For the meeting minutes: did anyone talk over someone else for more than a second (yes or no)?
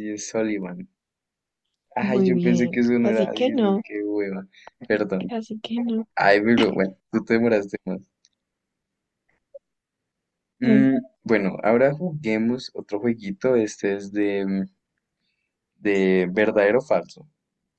yes